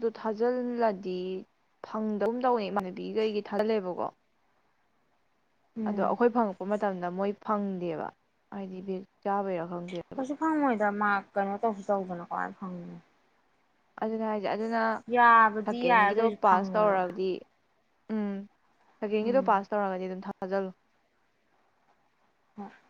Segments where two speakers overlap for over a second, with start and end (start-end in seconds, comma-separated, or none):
15.6-17.1